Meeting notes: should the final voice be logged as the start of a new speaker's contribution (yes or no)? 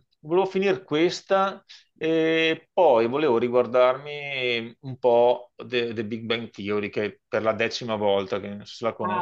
yes